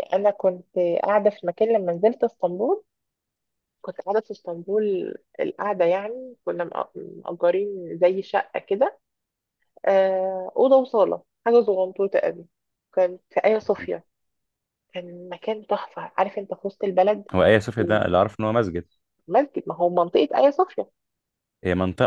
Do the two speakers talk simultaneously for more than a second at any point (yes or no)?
no